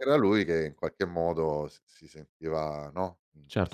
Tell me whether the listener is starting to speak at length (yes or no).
yes